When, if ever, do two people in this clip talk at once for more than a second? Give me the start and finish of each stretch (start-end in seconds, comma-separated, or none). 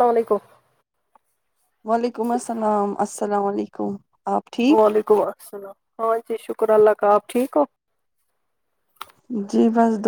none